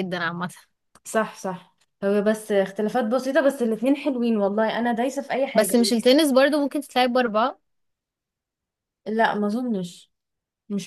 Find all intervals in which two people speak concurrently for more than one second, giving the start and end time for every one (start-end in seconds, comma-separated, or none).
none